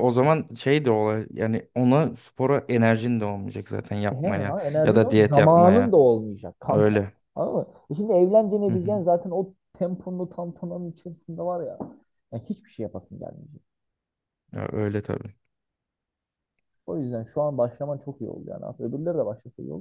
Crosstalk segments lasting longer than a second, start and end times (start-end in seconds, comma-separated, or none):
4.1-6.0